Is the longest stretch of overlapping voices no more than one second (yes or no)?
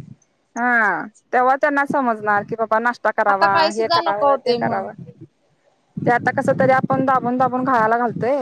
no